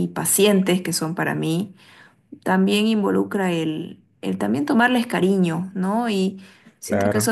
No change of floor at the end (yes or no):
yes